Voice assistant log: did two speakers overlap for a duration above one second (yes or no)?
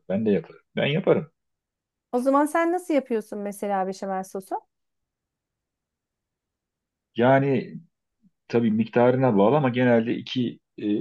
no